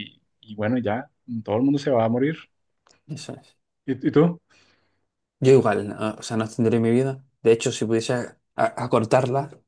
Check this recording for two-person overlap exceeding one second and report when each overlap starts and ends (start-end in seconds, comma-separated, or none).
none